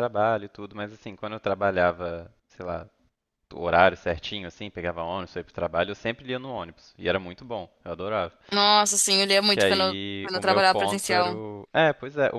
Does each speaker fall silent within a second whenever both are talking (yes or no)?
no